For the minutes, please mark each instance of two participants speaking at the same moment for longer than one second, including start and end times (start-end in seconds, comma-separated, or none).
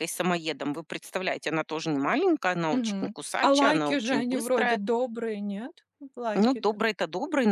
2.7-4.8